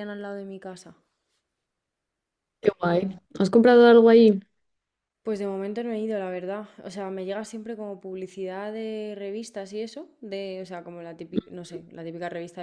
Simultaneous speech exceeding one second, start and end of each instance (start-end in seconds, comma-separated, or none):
none